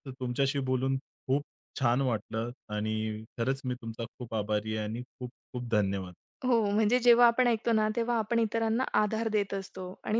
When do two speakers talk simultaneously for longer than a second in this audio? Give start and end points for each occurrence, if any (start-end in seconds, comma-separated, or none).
none